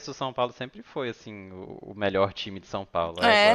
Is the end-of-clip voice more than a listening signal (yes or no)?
yes